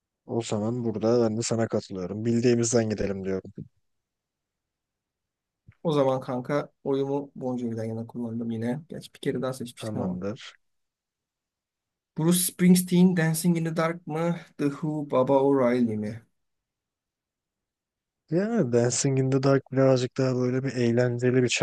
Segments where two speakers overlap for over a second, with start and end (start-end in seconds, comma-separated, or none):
none